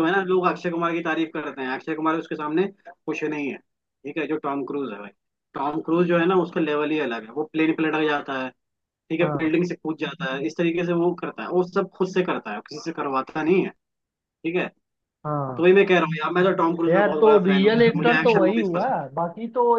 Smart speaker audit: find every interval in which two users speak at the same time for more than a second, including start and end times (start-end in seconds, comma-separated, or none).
16.9-19.1